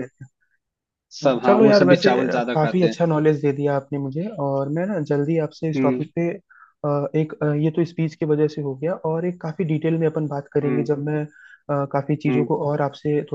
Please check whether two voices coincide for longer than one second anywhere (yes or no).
yes